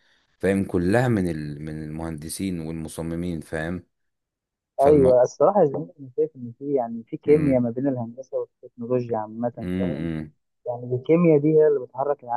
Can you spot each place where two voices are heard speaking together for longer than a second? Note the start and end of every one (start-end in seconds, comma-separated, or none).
none